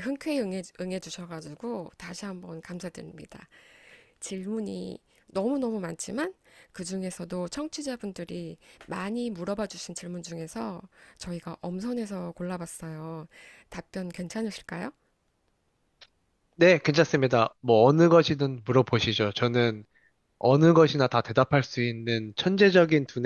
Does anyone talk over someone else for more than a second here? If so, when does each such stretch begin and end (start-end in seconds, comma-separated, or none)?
none